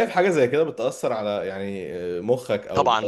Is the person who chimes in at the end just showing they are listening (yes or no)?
no